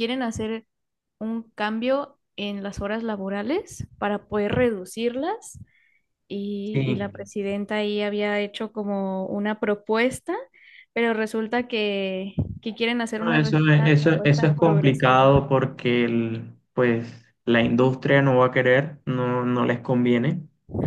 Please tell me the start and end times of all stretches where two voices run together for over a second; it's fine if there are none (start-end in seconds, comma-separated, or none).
13.2-15.3